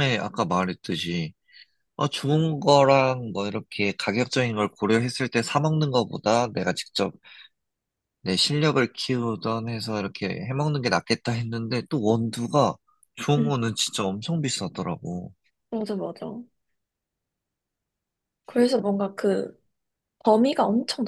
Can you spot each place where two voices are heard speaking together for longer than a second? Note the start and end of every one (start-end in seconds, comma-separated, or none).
none